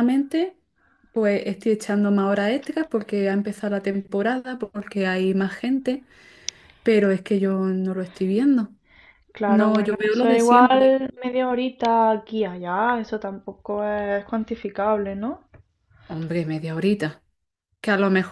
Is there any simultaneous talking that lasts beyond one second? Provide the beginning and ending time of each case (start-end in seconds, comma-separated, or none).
9.5-11.0